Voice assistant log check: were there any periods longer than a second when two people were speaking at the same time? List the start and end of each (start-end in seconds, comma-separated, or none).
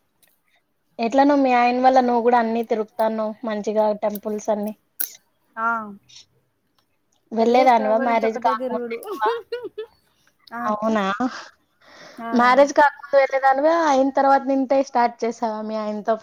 7.4-9.0